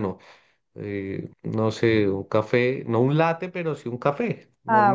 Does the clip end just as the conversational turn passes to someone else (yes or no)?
yes